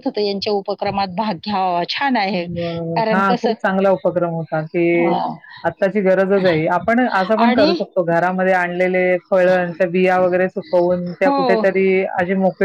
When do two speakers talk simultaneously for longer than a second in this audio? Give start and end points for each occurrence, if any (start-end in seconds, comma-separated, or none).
none